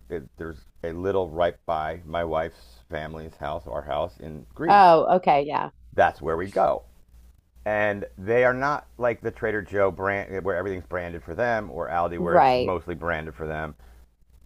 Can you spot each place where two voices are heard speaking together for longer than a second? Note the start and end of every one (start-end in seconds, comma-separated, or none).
none